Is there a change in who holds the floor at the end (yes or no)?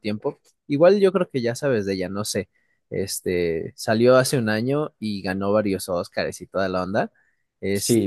yes